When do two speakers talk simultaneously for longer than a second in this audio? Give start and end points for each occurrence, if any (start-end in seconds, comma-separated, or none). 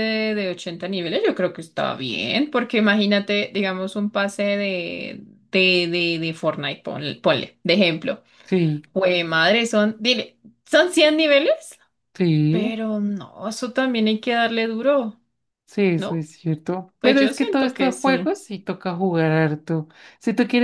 17.0-18.3